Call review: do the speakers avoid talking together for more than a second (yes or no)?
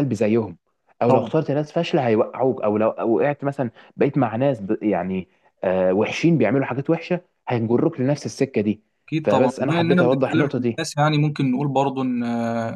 no